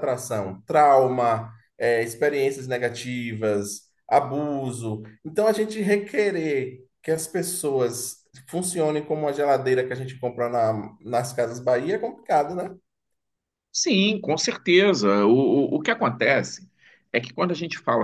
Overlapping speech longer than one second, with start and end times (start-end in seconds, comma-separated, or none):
none